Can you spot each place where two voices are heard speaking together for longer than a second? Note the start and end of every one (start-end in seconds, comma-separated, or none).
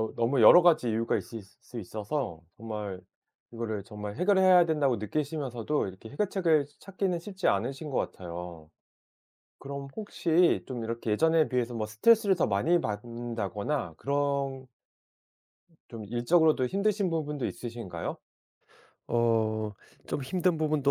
none